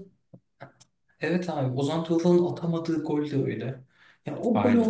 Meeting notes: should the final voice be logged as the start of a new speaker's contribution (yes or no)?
no